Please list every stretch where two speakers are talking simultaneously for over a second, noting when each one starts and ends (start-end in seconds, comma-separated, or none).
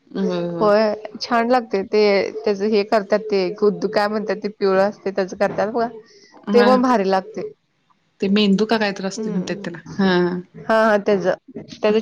8.2-9.7